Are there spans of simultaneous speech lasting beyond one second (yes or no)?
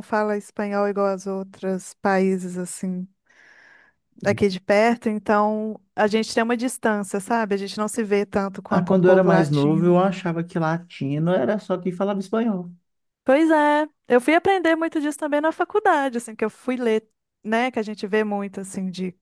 yes